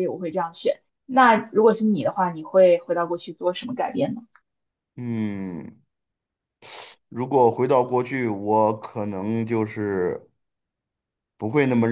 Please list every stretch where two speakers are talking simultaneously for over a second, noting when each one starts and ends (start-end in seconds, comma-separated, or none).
none